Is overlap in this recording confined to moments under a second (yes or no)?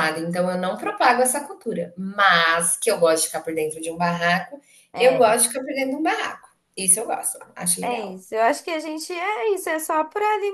yes